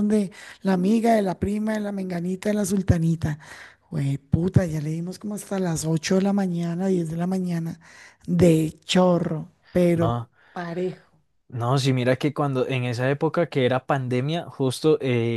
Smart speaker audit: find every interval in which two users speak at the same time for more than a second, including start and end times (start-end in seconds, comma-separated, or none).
none